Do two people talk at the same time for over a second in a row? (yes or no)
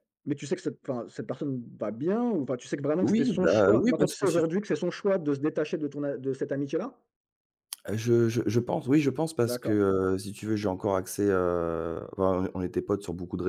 yes